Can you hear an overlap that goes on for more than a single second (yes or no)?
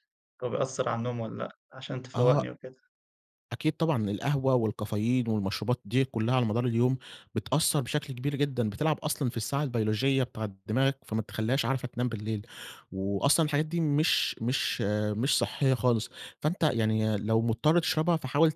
no